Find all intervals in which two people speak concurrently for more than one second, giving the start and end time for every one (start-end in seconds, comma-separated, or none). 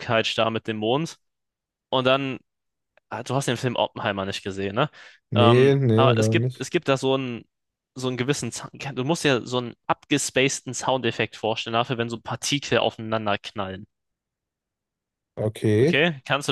5.3-6.7